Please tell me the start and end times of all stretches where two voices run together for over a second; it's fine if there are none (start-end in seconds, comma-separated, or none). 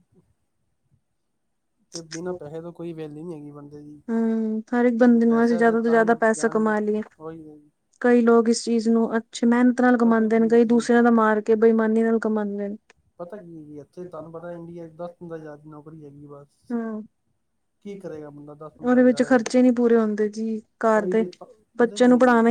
5.1-6.7